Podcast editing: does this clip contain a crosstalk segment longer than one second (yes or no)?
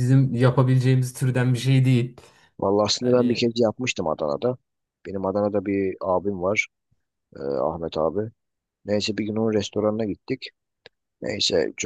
no